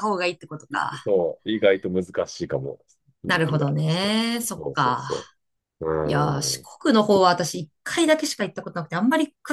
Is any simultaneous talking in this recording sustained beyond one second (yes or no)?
yes